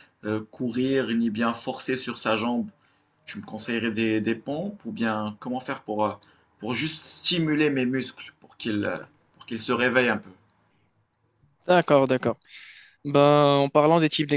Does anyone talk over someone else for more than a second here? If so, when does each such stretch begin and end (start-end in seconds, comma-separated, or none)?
none